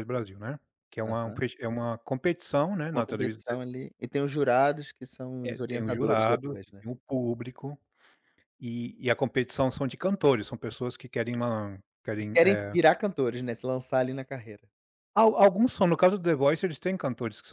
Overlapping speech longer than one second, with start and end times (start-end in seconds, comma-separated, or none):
5.4-6.8